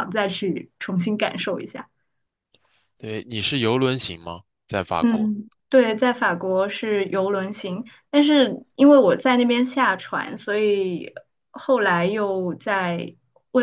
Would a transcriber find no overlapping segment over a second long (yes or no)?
yes